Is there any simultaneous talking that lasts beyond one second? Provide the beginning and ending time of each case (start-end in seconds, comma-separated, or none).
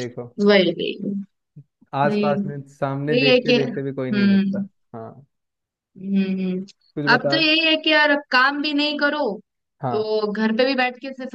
3.1-4.7